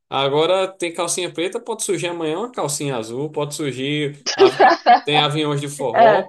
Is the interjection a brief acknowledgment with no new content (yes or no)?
yes